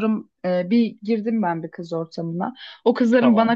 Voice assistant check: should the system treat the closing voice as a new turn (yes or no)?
no